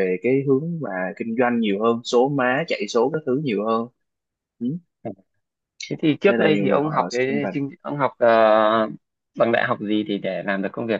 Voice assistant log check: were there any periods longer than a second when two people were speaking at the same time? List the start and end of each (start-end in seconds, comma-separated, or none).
6.3-7.5